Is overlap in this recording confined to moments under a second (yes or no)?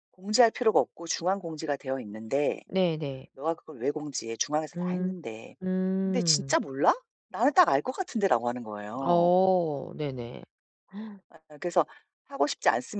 yes